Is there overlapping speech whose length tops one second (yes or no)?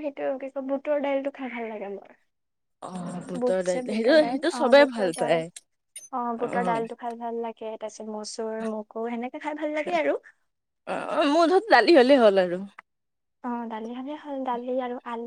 yes